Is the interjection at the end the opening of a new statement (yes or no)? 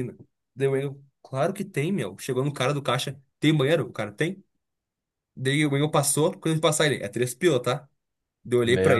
no